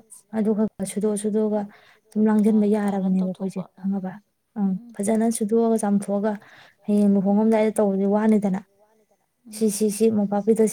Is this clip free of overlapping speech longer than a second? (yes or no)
no